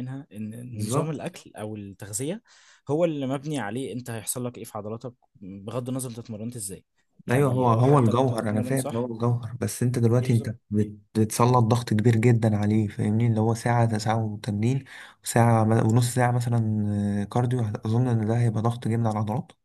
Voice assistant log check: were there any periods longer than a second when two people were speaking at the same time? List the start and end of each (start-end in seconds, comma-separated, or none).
7.3-9.1